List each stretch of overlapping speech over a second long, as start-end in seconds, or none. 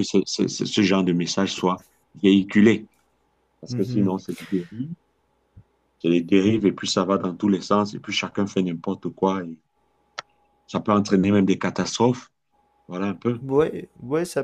none